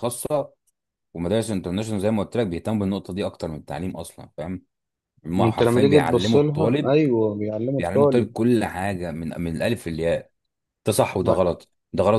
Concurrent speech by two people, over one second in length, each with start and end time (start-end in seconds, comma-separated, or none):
5.4-6.9